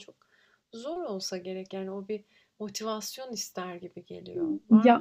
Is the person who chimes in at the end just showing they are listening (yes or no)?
no